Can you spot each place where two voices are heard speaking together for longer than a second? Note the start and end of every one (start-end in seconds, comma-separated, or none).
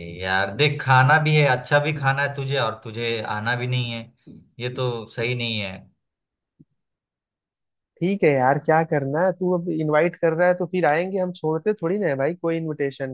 none